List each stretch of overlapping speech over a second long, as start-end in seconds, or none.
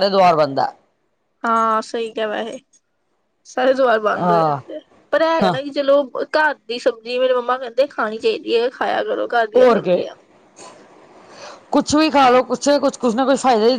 none